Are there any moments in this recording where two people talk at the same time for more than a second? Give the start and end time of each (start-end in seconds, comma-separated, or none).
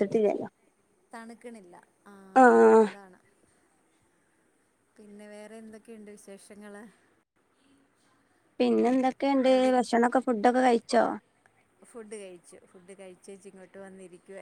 none